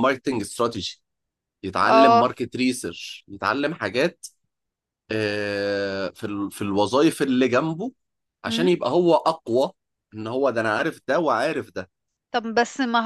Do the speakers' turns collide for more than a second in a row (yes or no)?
no